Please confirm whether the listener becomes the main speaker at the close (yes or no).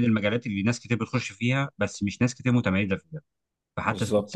no